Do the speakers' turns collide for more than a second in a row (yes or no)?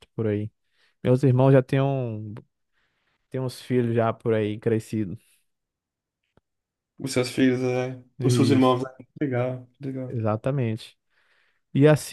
no